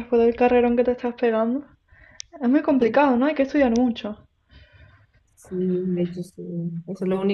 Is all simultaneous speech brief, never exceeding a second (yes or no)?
yes